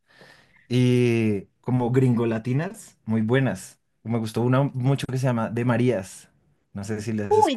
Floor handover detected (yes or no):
yes